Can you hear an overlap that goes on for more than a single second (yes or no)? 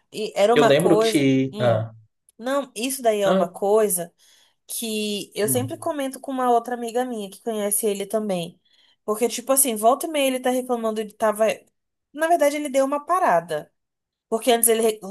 yes